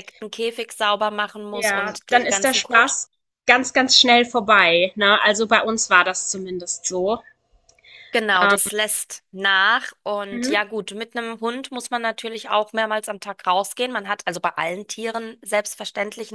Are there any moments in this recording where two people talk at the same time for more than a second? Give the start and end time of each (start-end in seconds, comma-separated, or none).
1.5-3.0